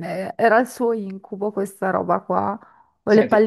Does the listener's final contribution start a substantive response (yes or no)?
no